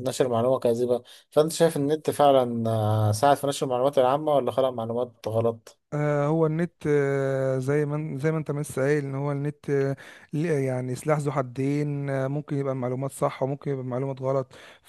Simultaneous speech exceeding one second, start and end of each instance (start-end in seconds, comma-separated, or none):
none